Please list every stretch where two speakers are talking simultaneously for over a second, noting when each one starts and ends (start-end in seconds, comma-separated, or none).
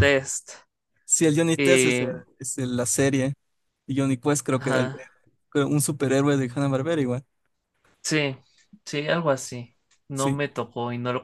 none